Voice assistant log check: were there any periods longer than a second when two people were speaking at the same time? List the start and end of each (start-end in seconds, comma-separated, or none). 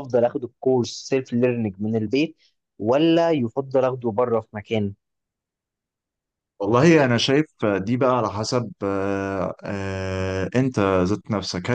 none